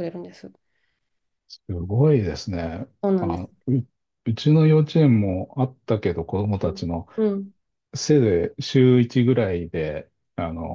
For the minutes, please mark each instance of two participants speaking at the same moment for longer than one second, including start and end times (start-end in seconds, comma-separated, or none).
none